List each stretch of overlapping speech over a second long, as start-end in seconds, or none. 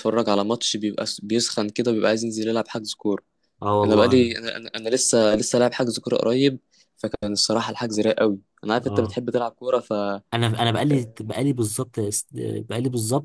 none